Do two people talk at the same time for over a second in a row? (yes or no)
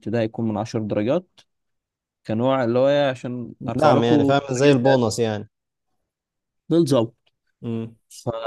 yes